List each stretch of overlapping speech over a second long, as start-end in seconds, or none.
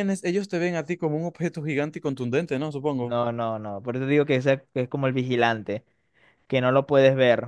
none